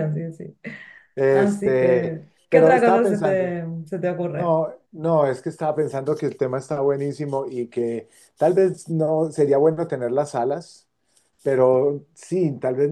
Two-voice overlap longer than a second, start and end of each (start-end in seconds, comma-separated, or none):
1.3-3.5